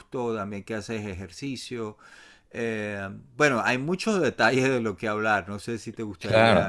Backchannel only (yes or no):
no